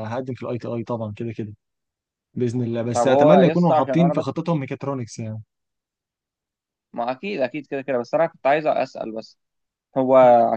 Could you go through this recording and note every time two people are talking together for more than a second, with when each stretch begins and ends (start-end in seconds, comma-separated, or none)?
2.9-4.2